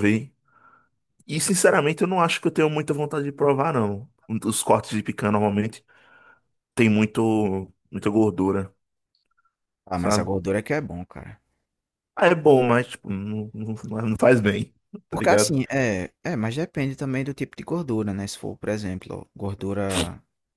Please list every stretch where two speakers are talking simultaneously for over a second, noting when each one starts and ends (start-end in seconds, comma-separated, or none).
none